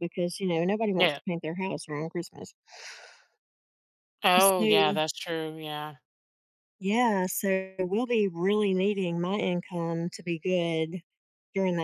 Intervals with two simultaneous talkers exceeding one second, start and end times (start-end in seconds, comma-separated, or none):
none